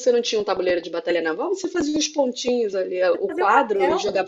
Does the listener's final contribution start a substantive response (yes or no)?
no